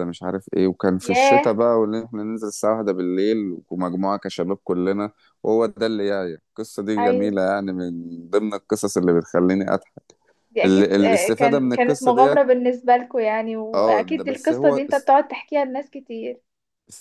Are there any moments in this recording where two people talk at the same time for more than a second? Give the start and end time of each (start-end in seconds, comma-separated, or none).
10.6-12.4, 13.7-15.1